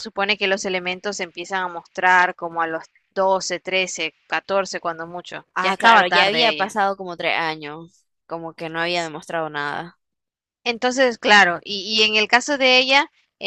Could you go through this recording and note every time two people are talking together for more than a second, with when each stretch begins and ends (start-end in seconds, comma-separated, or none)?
5.5-6.8